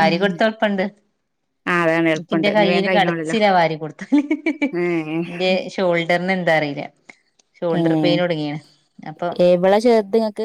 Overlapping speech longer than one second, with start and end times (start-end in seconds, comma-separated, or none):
2.1-3.4